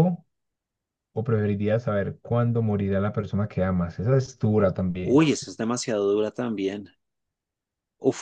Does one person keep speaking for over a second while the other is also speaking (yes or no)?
no